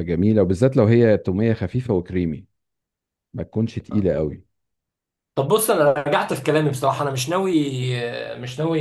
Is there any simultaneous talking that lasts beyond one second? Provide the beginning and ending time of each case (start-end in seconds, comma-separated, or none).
none